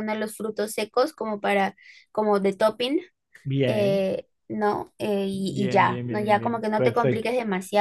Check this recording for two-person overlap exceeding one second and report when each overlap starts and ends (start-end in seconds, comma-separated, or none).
5.3-7.3